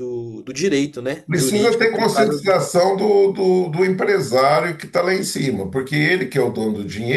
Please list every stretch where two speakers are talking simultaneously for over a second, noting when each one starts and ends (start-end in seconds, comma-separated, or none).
1.3-2.5